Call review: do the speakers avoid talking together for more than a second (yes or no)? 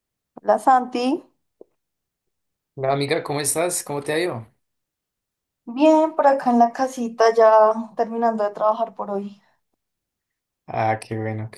yes